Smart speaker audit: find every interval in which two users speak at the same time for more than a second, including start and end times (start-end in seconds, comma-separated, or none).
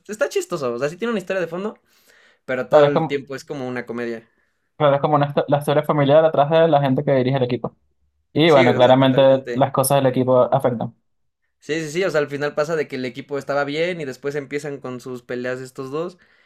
8.4-9.7